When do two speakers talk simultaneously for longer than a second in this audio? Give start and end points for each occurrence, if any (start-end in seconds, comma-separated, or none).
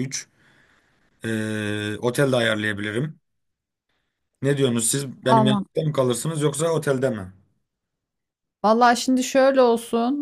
none